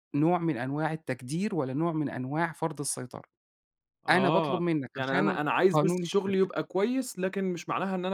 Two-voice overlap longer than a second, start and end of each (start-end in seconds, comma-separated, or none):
4.1-6.5